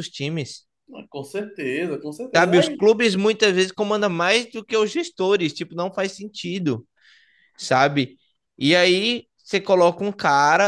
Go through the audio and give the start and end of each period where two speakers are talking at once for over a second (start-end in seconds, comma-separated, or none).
none